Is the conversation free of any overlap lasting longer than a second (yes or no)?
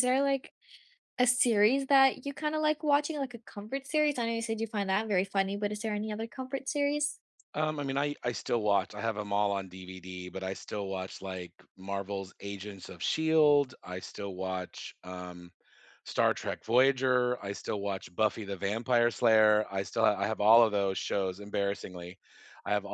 yes